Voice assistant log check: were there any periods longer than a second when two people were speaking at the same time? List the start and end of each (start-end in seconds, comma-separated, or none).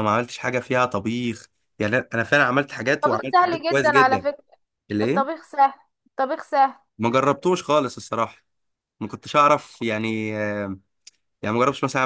3.0-4.3